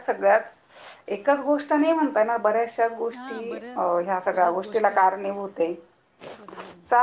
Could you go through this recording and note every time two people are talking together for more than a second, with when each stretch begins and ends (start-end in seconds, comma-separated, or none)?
3.1-5.1